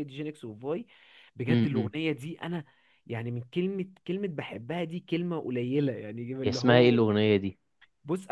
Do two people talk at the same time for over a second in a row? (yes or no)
no